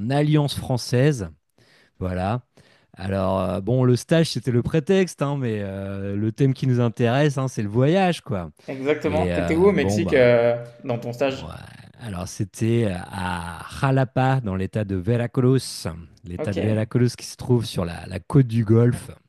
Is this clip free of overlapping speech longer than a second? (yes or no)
no